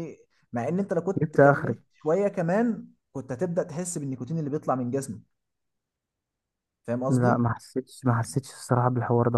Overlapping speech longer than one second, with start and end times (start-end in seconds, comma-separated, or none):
none